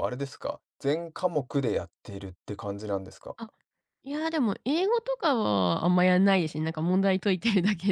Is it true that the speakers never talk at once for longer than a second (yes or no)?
yes